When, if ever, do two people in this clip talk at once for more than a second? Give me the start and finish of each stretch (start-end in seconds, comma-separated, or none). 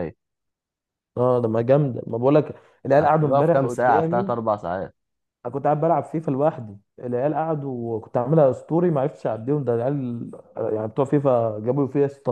3.0-4.3